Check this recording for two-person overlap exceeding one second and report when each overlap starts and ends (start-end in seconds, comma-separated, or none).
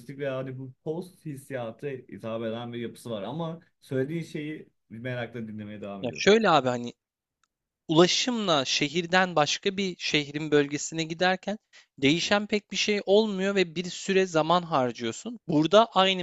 none